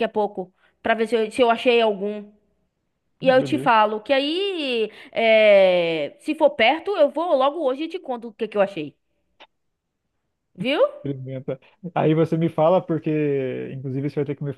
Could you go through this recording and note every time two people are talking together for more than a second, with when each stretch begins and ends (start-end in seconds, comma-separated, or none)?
none